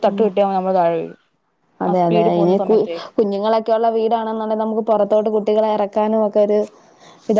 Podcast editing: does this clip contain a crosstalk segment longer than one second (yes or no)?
no